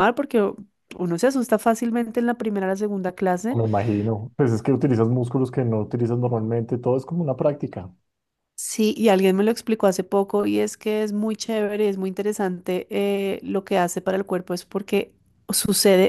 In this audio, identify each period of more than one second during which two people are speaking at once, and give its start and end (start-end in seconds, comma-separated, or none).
none